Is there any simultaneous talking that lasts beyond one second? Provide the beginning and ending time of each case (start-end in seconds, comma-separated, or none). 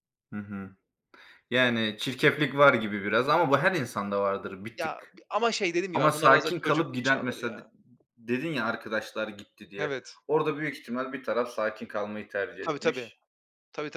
5.9-7.6